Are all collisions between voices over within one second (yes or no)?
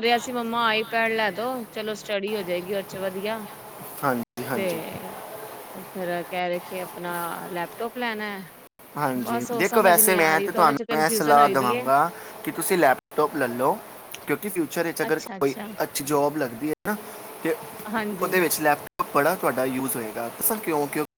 no